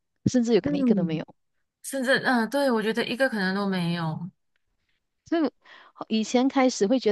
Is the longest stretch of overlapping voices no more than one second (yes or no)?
yes